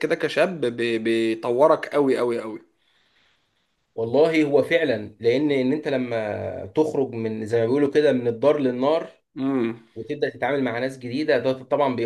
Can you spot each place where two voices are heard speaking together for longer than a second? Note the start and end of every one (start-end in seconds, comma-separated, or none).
none